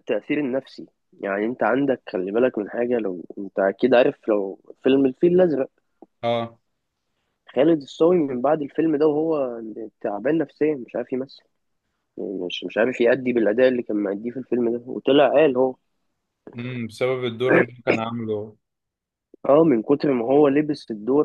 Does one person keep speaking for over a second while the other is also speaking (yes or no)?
no